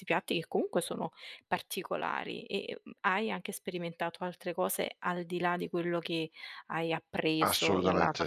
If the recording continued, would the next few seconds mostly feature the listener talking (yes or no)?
yes